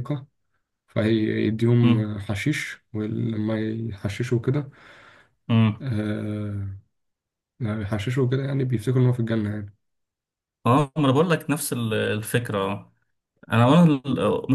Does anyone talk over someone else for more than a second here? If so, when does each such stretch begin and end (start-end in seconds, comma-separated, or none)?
none